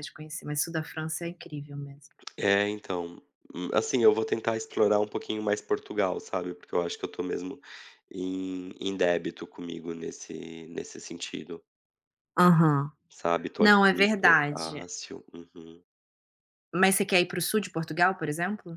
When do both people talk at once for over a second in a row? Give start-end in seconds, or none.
13.6-14.9